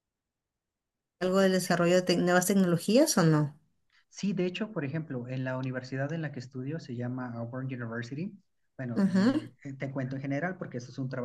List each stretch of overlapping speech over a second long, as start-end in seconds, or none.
none